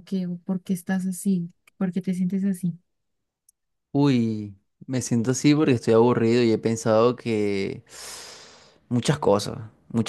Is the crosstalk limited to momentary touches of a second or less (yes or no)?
yes